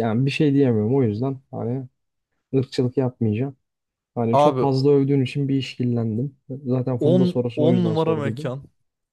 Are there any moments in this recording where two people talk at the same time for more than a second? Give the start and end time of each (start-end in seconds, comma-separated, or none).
7.0-8.5